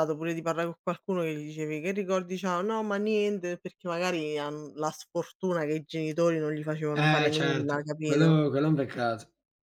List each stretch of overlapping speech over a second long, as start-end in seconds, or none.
6.9-8.4